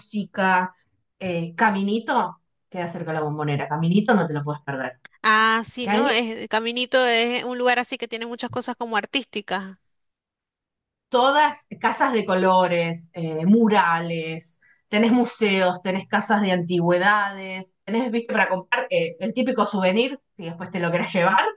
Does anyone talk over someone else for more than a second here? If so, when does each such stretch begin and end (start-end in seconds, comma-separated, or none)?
none